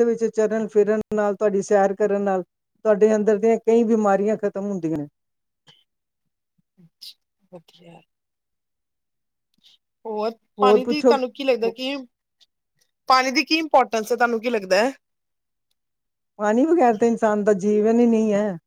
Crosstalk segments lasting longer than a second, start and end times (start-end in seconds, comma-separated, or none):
none